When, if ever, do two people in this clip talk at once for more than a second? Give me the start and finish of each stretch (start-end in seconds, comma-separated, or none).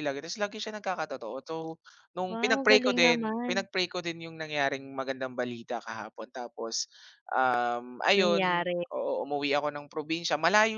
2.3-3.5